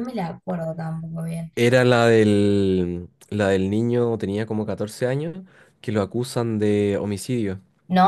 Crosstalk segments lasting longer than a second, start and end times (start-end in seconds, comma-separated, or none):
none